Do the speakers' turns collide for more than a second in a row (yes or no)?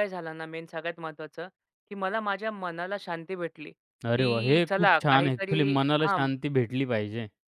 yes